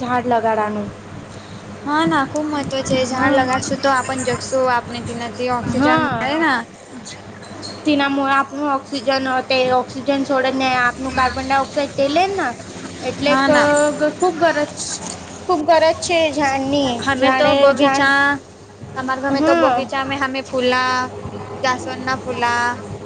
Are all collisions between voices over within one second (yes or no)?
yes